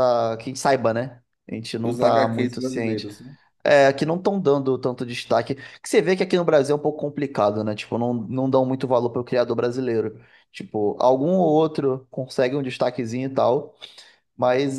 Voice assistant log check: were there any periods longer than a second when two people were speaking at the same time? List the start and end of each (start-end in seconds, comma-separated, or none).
1.8-3.1